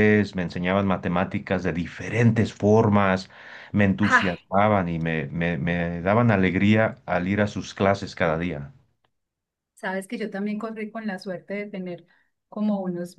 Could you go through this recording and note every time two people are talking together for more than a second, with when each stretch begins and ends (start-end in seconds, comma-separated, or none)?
none